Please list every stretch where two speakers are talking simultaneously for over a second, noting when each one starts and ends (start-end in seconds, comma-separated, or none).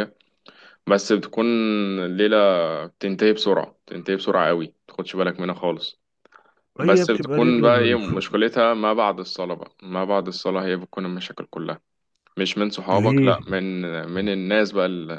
6.8-8.2